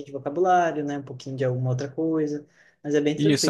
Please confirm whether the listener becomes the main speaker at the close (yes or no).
yes